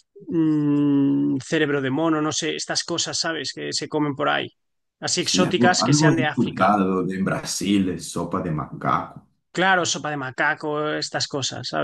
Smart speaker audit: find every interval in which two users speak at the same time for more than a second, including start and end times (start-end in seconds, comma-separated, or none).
5.2-6.7